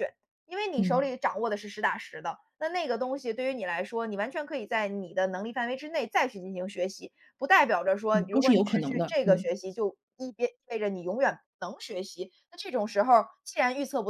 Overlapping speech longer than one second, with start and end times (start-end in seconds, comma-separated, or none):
8.1-9.4